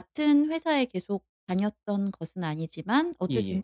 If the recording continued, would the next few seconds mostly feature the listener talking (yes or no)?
no